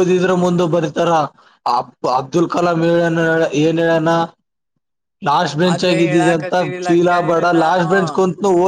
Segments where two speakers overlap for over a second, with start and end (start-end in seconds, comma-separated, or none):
5.7-7.8